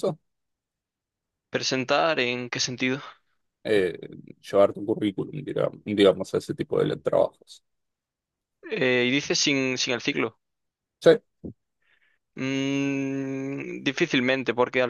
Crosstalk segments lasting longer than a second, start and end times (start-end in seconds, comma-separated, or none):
none